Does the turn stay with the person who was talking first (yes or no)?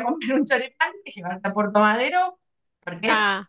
yes